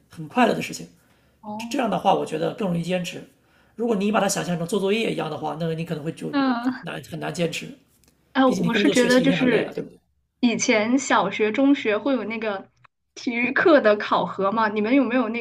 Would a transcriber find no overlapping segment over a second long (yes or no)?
no